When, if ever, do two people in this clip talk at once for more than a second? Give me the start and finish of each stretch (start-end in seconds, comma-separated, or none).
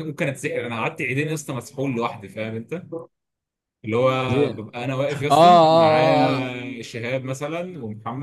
5.3-6.5